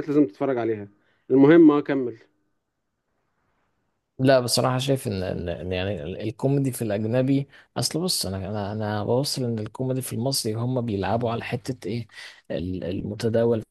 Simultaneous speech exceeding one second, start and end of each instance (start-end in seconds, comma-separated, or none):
none